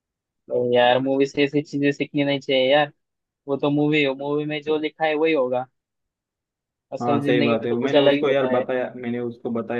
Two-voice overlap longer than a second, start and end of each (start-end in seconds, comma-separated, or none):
7.0-8.7